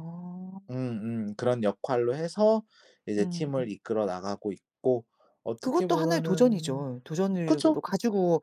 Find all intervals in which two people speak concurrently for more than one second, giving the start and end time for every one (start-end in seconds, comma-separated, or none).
5.6-6.8